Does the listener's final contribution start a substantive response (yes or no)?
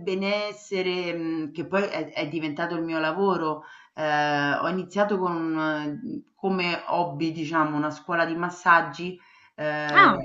no